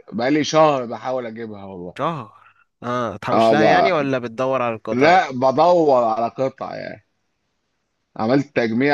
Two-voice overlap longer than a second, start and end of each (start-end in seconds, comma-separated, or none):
none